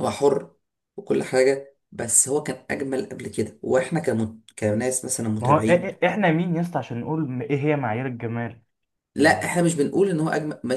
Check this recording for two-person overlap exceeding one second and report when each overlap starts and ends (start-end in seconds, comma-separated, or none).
none